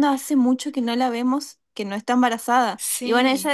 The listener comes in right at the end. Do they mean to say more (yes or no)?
no